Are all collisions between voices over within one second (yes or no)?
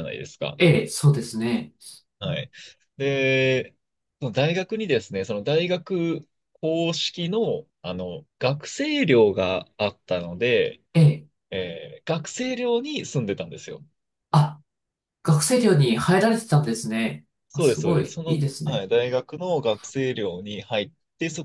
no